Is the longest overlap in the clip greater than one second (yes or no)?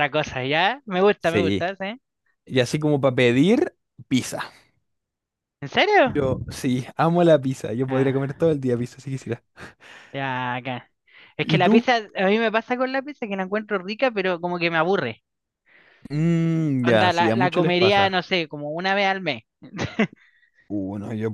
yes